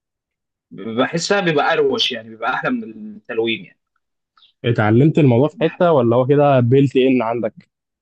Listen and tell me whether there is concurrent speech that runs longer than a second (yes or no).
no